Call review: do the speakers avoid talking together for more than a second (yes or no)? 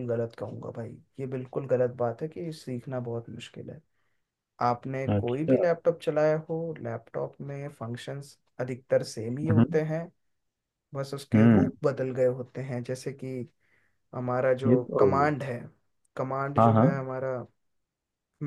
yes